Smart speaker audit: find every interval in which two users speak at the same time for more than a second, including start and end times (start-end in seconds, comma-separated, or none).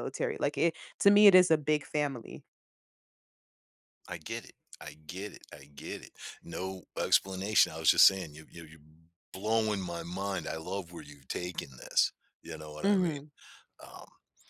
none